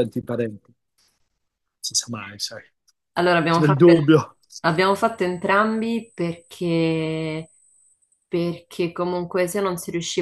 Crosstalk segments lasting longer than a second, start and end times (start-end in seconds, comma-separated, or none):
none